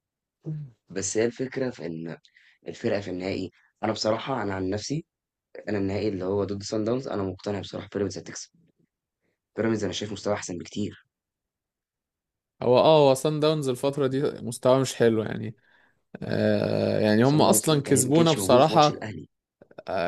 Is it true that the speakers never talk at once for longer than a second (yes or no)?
no